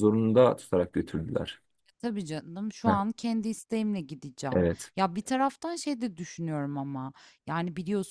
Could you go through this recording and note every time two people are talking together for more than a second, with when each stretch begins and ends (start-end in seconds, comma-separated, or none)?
none